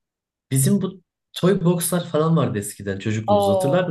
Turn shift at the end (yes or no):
yes